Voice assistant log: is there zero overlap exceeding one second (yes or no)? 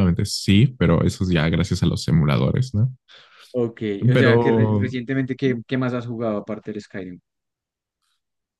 yes